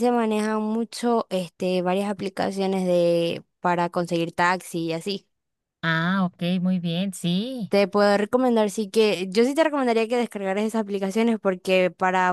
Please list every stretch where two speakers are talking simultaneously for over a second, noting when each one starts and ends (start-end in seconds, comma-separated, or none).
none